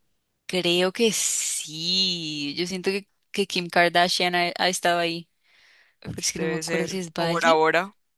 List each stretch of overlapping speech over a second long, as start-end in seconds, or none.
6.3-7.7